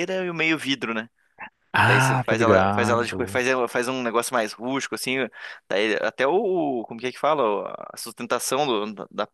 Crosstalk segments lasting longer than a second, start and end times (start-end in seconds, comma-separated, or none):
1.9-3.4